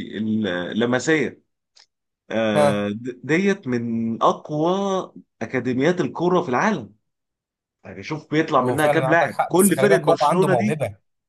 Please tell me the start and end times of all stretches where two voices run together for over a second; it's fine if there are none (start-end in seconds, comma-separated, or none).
8.6-10.8